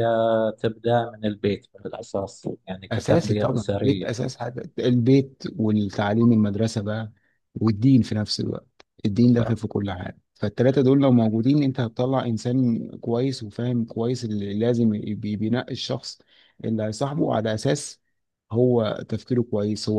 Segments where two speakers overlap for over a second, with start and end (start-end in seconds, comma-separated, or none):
2.9-4.3